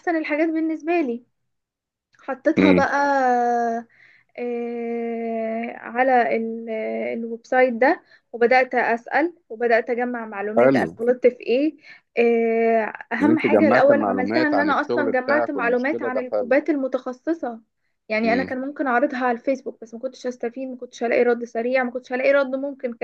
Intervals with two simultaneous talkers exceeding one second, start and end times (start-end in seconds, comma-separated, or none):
13.2-16.6